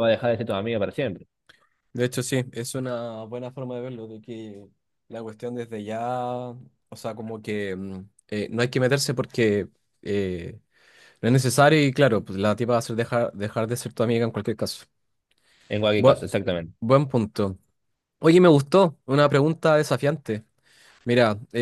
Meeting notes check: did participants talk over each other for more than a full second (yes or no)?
no